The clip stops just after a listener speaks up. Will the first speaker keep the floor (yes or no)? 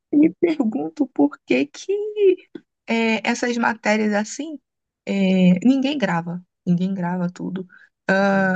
yes